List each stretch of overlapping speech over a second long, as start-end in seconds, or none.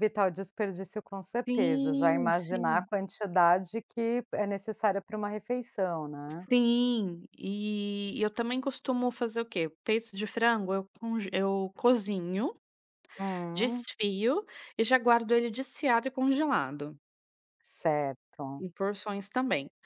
1.5-2.9